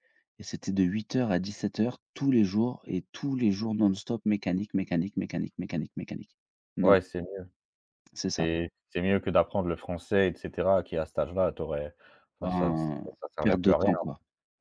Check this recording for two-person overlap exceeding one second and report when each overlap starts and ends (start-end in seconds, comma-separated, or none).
12.4-14.0